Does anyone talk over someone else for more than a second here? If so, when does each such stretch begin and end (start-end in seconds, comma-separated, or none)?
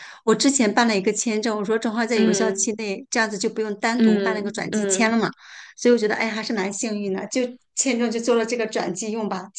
4.0-5.2